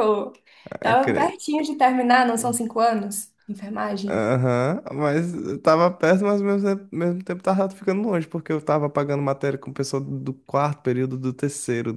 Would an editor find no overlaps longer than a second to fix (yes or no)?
yes